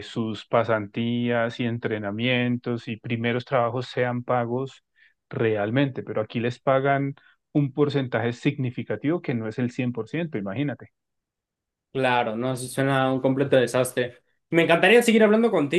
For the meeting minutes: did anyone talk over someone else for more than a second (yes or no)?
no